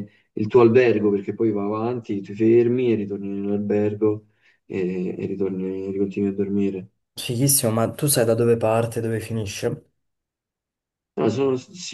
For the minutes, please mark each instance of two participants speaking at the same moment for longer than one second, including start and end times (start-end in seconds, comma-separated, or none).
none